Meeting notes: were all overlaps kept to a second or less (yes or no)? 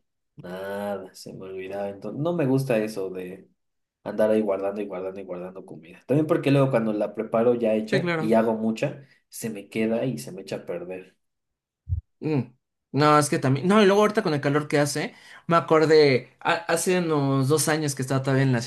yes